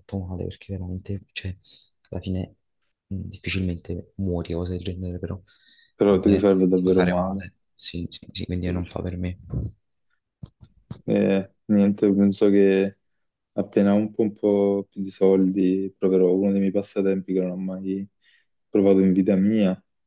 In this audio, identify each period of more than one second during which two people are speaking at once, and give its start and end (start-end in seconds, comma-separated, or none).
6.0-7.4